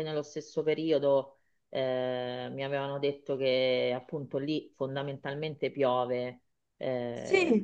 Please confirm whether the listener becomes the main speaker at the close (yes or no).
yes